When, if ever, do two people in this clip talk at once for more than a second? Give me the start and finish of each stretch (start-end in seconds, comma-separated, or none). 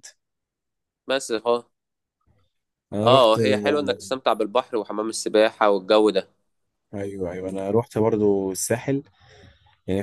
none